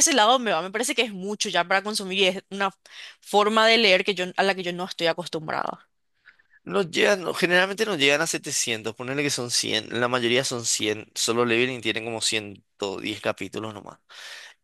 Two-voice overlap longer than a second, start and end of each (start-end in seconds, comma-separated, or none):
none